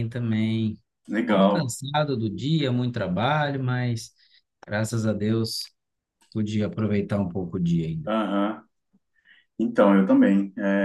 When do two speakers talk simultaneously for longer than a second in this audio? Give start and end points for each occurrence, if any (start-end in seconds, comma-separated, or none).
none